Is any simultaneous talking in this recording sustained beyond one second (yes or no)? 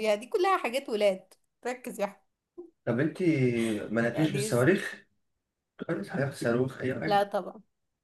no